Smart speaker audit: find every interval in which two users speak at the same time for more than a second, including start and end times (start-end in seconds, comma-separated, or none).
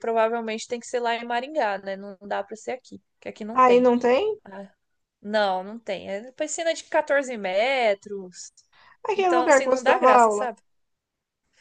9.2-10.5